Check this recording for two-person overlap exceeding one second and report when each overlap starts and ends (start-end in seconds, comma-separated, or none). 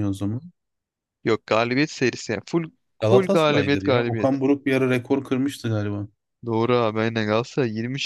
3.0-4.4